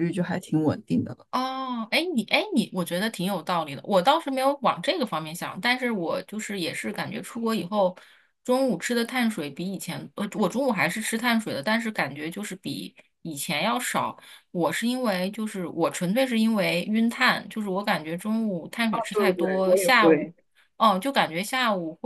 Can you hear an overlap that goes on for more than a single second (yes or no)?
yes